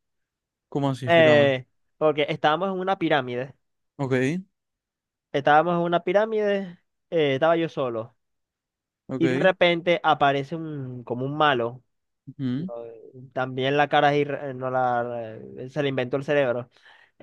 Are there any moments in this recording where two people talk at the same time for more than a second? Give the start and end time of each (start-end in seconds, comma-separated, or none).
none